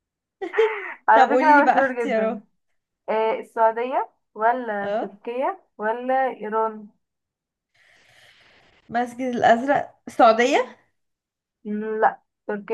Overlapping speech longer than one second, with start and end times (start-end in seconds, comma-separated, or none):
1.1-2.4